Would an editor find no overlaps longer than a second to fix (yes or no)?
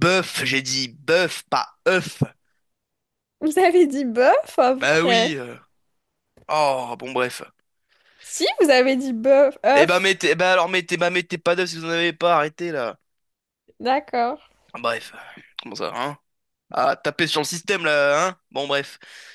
yes